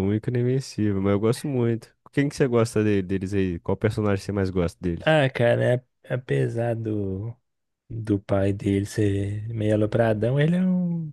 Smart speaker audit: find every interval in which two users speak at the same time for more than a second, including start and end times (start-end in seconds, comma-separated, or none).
none